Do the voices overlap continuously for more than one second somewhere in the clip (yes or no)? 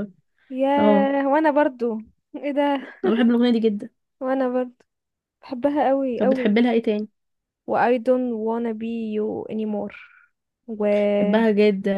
no